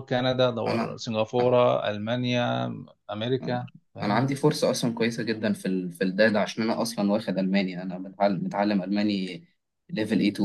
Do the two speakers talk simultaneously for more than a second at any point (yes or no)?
no